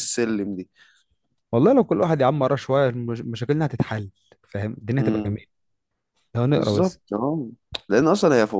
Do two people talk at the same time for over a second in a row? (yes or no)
no